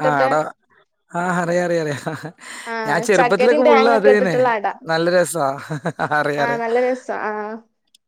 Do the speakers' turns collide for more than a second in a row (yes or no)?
yes